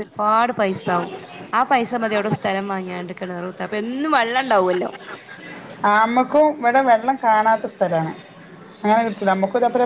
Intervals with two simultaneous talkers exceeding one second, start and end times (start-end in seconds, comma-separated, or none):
none